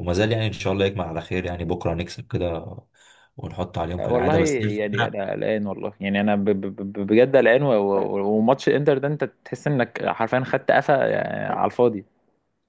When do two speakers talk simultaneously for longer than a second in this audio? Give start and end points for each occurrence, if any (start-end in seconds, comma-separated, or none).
4.0-5.2